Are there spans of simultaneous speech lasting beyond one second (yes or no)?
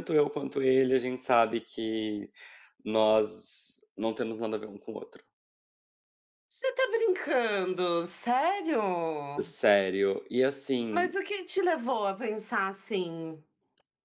no